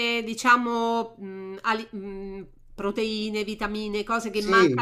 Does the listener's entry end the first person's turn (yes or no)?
yes